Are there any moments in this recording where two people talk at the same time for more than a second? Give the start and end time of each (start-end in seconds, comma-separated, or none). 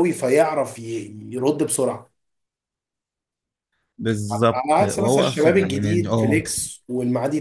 4.5-6.4